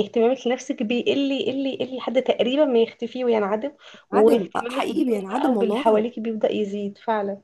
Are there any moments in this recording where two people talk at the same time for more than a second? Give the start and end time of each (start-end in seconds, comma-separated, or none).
4.1-6.0